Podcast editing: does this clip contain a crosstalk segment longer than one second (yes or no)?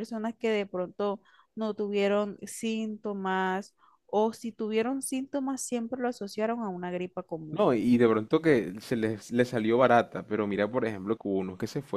no